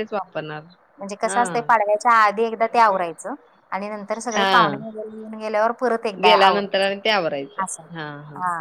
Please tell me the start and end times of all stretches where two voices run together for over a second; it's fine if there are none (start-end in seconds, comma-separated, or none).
6.2-7.8